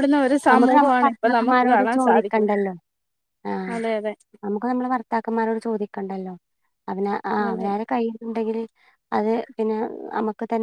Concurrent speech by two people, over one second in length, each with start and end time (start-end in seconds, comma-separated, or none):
0.5-2.5